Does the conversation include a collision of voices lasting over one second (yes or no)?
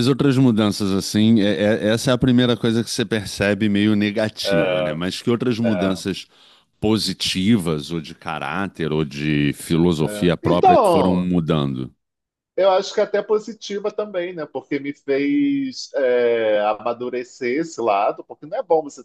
yes